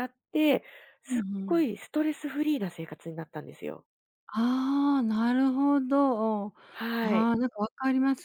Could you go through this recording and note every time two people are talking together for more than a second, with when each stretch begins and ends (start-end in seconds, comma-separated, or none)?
none